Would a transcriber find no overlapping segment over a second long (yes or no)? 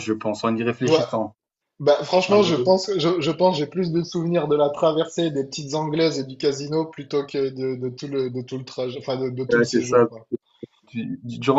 yes